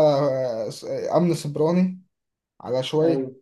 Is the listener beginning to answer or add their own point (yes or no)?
no